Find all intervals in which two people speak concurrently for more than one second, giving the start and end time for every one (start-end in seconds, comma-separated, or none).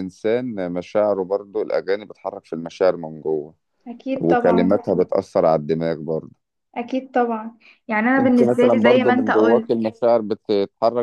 8.2-9.7